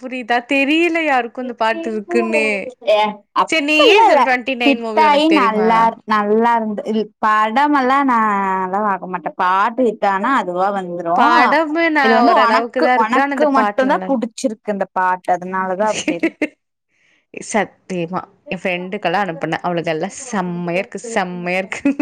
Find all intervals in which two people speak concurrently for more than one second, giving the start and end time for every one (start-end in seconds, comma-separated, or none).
12.1-14.1